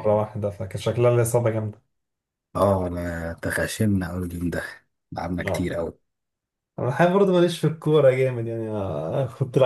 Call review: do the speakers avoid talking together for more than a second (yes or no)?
yes